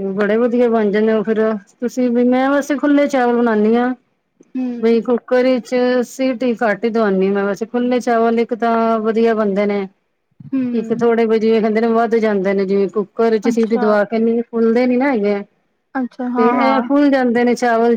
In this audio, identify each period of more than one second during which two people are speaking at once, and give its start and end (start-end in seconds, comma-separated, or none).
none